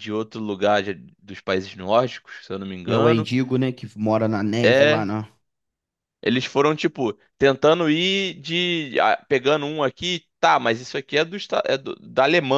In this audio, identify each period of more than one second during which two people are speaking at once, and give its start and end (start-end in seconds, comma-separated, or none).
none